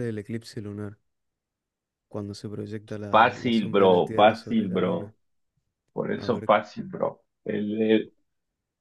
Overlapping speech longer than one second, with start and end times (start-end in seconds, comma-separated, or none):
3.1-5.1